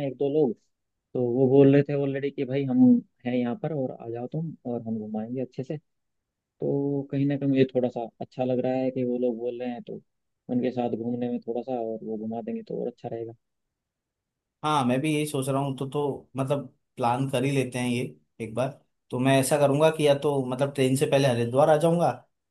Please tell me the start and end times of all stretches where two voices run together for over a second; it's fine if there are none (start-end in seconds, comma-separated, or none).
none